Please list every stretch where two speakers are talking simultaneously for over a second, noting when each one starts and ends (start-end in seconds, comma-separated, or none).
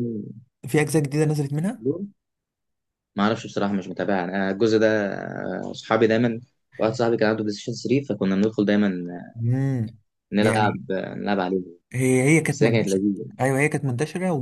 none